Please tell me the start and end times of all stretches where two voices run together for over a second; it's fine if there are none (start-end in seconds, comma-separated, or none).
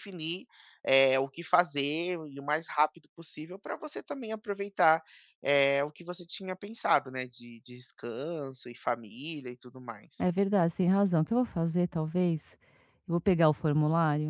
none